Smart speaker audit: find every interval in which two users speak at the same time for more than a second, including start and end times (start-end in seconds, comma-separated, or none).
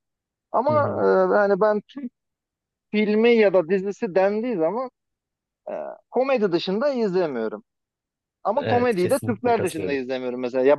8.6-10.0